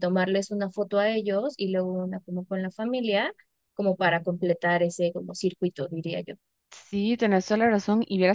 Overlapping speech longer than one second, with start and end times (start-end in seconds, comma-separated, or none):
none